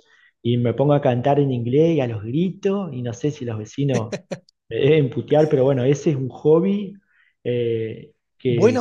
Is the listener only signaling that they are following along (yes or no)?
no